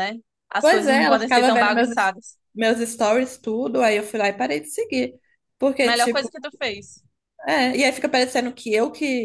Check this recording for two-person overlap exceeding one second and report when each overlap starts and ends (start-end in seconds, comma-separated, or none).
0.6-1.9